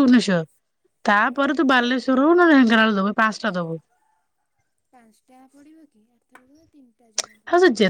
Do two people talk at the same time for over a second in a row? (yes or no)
no